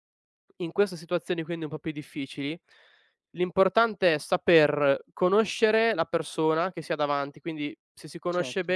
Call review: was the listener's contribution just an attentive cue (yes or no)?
yes